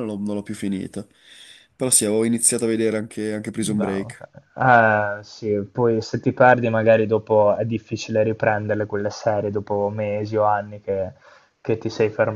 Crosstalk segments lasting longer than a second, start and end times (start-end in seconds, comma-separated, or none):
none